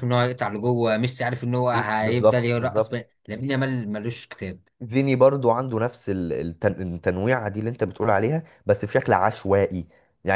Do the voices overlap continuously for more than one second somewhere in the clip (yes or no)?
yes